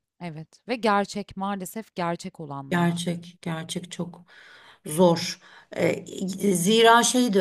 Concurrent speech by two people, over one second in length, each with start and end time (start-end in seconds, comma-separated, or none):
none